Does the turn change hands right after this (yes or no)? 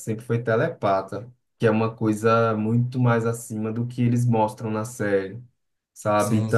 no